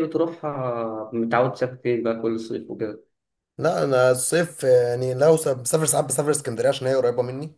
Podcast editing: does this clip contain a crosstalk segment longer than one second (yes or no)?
no